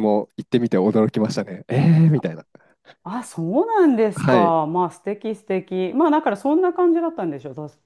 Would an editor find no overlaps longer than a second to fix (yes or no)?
yes